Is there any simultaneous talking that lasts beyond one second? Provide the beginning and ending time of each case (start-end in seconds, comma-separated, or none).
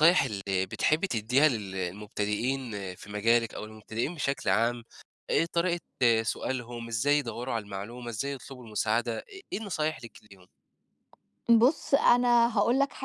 none